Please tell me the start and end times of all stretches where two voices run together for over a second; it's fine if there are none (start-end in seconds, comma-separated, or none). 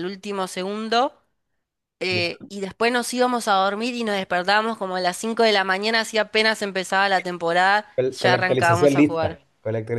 8.0-9.4